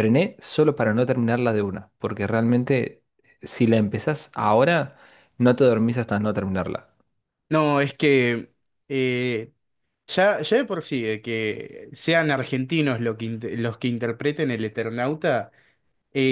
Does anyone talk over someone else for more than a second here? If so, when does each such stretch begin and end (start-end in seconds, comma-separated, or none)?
none